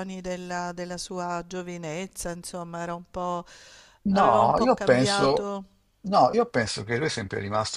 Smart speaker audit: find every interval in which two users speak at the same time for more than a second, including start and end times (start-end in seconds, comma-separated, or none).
4.1-5.5